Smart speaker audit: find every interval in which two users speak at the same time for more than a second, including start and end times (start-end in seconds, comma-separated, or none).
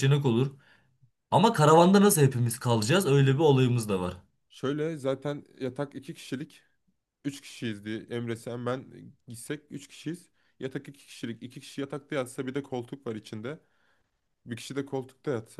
none